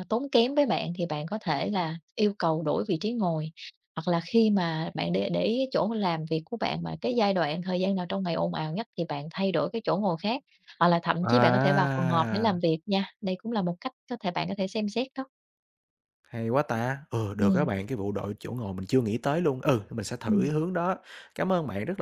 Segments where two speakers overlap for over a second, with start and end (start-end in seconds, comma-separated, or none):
11.2-12.6